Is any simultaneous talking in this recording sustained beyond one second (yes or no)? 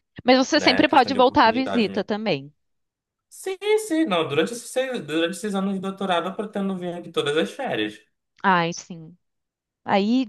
yes